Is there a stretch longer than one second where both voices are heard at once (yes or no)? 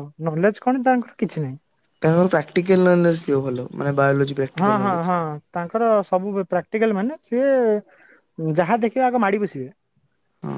no